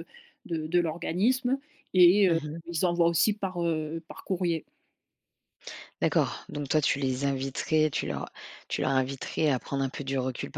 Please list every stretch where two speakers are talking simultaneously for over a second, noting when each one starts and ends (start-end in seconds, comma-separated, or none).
none